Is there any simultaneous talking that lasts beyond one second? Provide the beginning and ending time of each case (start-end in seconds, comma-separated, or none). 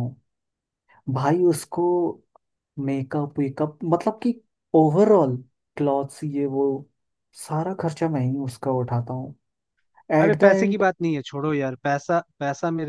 none